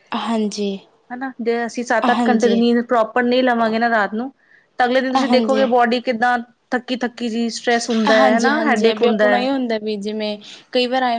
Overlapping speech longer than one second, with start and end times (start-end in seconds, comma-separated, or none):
8.2-9.5